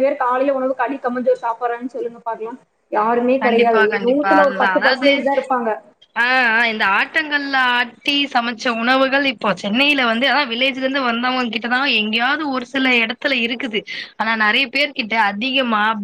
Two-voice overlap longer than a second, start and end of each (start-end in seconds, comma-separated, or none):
3.4-5.1